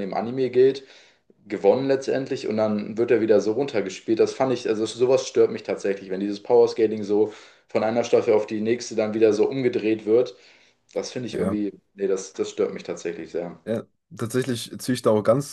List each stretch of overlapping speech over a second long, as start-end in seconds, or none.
none